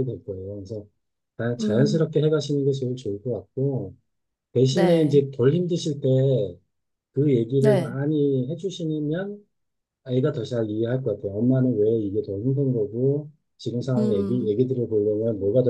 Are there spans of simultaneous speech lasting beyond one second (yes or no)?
no